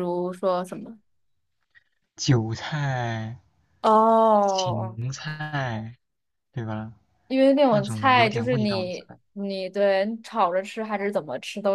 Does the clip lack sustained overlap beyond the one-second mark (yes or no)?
no